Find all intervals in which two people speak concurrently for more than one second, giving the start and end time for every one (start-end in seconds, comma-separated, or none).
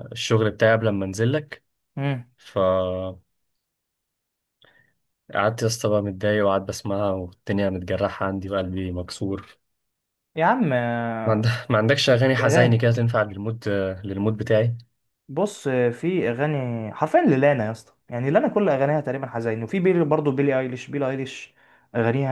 none